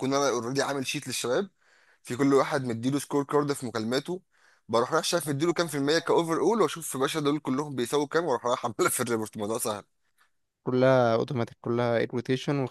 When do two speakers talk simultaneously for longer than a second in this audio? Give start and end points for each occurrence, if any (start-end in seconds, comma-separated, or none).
none